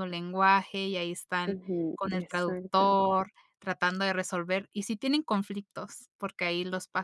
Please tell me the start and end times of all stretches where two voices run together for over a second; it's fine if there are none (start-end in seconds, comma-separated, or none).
1.5-3.0